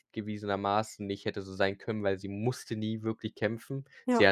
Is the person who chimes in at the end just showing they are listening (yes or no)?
yes